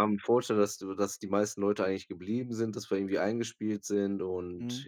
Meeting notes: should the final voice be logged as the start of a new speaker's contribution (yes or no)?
yes